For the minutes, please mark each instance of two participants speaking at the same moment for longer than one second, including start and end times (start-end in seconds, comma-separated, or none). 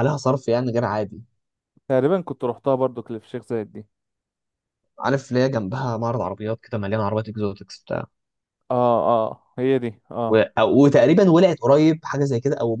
none